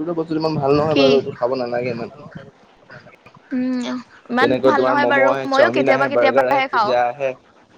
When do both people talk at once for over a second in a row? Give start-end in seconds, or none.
4.4-6.9